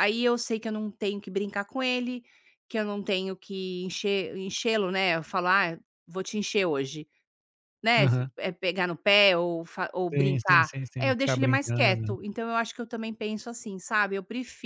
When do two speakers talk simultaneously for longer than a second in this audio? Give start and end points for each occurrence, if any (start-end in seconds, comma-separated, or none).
10.1-12.2